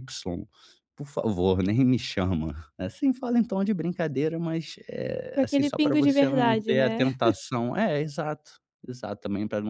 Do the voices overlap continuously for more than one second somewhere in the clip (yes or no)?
yes